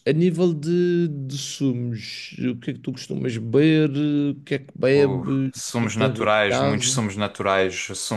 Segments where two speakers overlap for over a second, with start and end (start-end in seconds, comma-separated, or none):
4.9-7.0